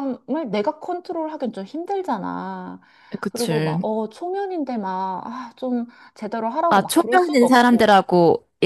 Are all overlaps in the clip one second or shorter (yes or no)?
no